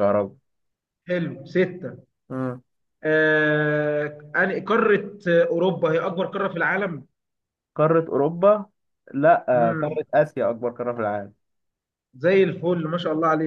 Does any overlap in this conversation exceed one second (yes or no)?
no